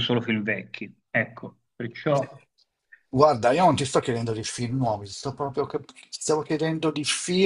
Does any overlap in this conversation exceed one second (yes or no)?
no